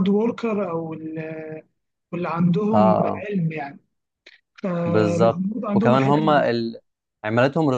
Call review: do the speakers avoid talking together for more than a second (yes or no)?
no